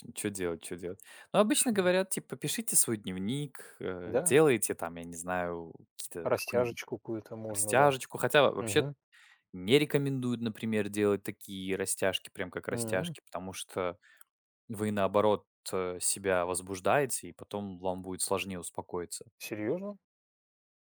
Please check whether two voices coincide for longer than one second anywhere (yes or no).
no